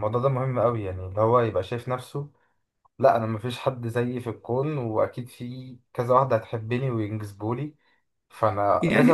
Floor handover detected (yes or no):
yes